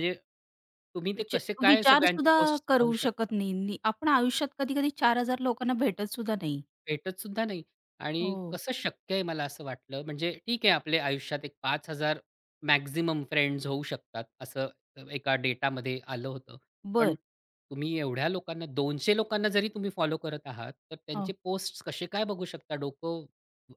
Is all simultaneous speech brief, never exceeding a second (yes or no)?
no